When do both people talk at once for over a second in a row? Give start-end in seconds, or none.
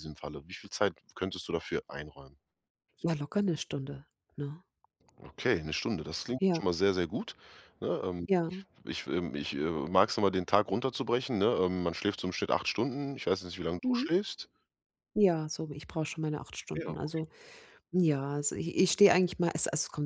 none